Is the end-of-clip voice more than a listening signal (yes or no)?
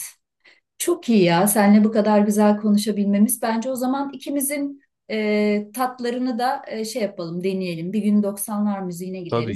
no